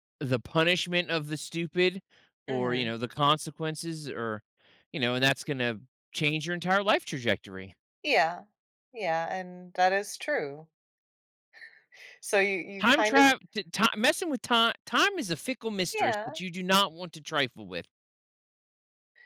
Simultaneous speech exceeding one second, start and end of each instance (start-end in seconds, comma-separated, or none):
none